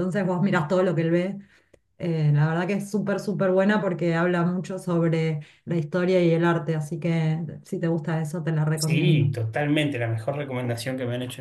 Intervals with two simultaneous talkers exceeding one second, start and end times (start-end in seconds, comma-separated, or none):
none